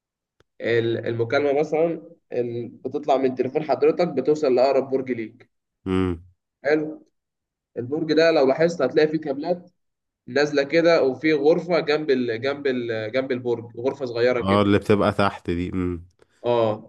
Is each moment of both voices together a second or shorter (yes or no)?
yes